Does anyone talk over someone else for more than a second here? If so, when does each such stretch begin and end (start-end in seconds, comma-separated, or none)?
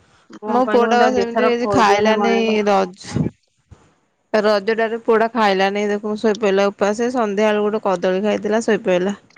0.5-2.3